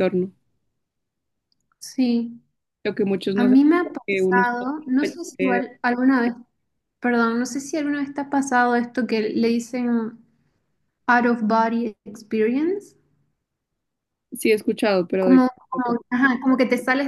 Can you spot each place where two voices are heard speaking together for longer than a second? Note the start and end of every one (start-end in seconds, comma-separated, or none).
3.4-5.6